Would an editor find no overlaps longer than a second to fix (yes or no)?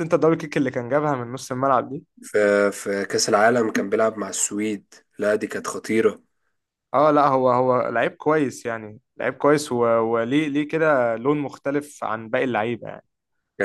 yes